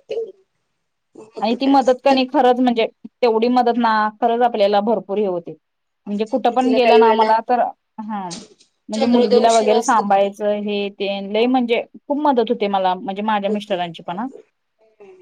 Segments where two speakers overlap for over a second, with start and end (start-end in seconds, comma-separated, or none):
6.1-7.3, 8.9-10.3